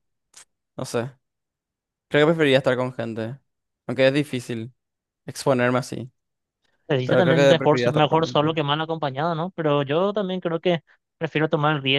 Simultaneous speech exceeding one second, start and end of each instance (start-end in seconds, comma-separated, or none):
7.0-8.6